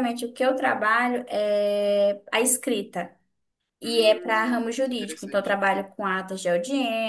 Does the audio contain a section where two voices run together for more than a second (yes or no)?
yes